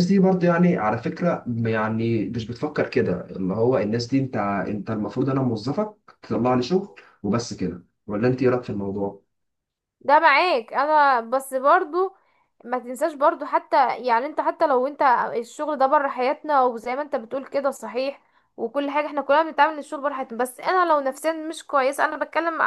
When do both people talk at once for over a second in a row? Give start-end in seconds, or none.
none